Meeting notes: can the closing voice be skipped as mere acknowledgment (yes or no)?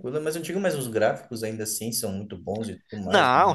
no